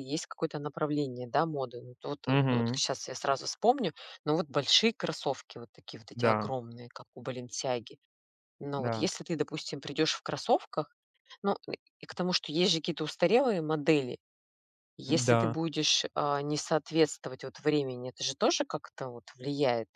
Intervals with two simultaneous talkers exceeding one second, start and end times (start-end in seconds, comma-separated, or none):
none